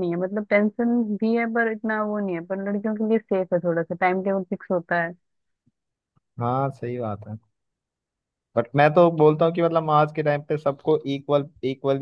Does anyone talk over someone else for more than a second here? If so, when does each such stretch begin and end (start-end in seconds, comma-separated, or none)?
none